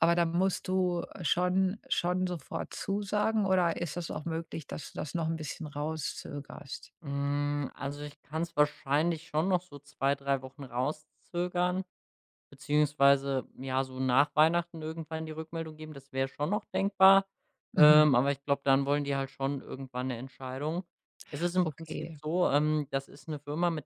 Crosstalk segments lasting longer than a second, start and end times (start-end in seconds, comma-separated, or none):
none